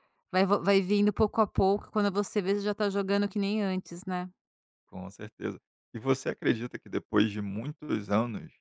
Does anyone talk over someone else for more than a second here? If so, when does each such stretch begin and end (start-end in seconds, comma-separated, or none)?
none